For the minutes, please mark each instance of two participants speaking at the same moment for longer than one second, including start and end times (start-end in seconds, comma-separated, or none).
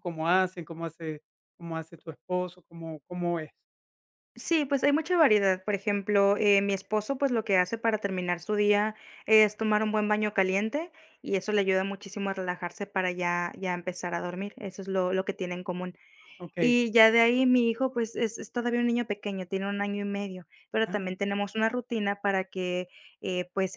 none